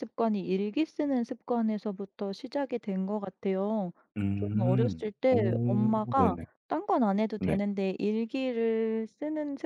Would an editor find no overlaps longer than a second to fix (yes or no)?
no